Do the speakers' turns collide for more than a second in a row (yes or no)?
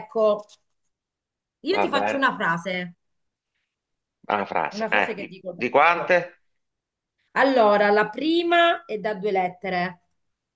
yes